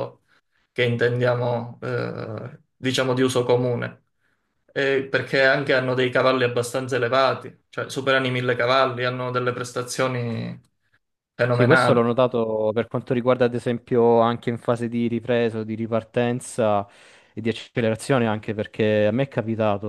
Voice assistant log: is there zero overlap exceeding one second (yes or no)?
yes